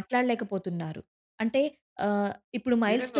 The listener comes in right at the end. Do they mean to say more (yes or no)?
yes